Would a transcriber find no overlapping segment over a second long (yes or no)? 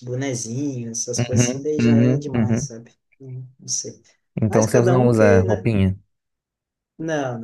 no